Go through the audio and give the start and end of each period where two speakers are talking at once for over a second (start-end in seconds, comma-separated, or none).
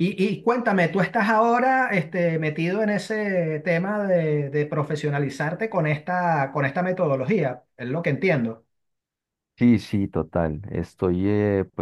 none